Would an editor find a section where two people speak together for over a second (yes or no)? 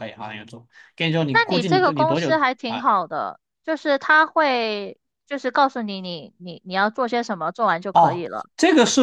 yes